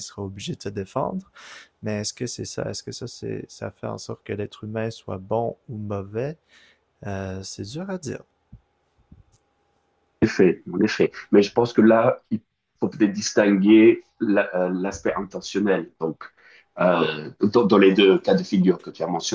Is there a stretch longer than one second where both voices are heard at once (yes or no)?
no